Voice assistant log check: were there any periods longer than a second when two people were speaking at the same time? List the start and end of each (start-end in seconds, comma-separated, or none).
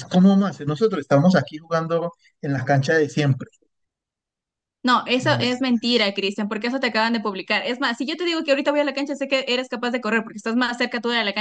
none